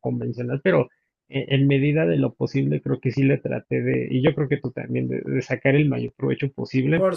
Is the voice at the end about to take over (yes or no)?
no